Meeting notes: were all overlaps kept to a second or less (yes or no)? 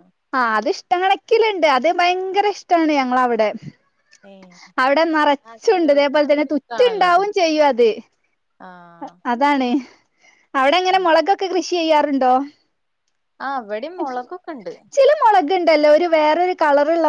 no